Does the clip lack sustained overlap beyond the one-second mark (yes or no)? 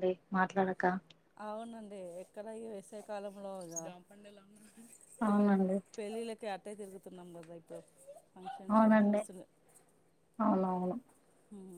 yes